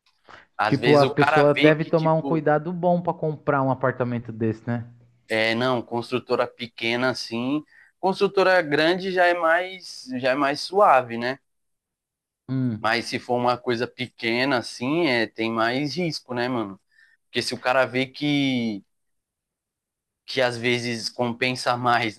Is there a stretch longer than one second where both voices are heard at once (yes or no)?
yes